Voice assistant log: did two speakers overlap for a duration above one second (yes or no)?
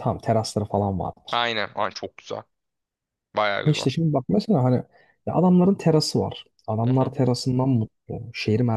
no